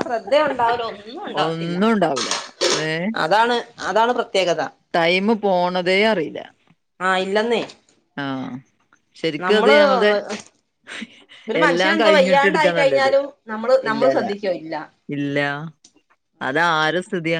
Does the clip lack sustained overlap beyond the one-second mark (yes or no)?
no